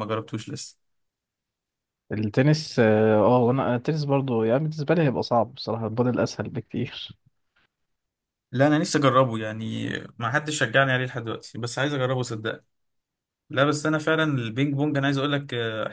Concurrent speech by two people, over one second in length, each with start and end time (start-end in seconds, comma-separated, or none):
none